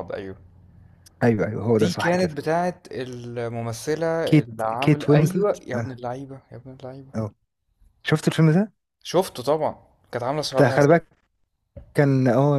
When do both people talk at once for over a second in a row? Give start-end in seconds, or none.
4.2-5.9